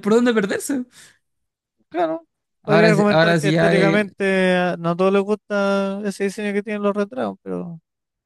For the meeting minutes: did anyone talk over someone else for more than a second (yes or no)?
yes